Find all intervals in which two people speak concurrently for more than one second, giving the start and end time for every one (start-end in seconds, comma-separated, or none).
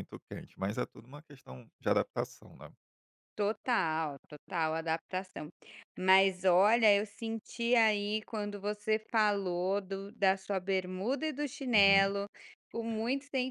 none